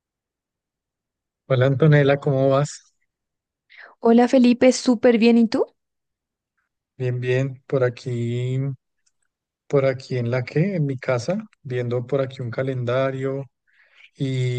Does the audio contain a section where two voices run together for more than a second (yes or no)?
no